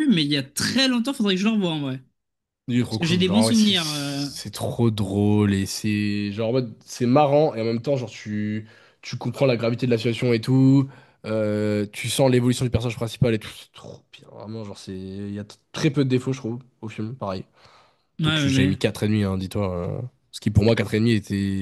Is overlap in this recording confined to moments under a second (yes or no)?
no